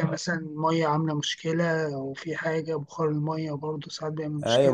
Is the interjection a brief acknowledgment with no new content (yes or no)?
no